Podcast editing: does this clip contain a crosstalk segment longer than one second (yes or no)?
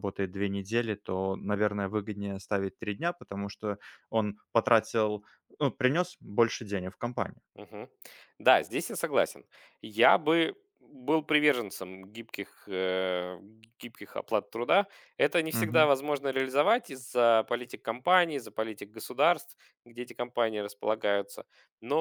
no